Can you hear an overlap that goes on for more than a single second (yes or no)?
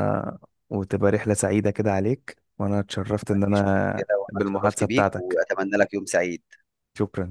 yes